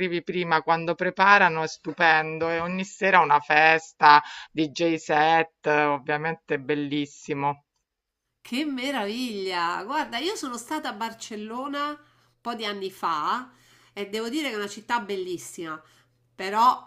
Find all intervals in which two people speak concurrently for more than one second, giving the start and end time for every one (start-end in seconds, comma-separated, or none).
none